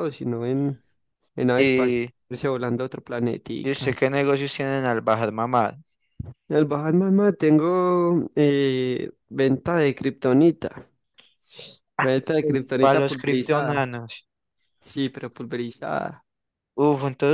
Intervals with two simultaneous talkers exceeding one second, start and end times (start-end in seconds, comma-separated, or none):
12.4-13.8